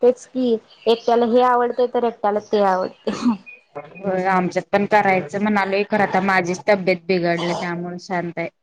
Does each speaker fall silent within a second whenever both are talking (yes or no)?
yes